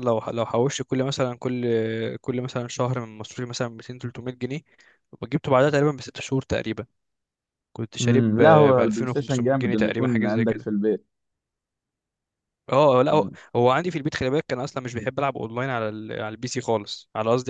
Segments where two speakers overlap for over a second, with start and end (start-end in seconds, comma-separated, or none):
8.0-10.7